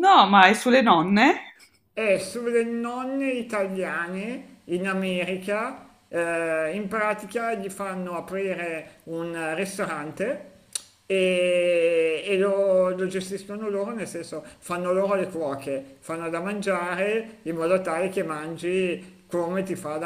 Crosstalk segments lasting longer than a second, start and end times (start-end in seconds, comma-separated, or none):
none